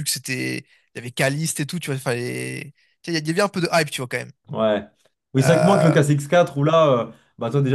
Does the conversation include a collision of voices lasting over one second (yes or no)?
no